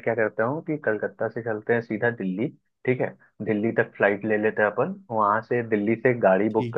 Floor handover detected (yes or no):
no